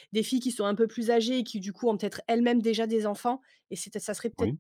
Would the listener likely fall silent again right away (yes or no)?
yes